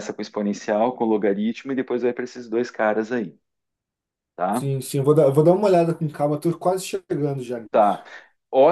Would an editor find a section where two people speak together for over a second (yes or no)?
no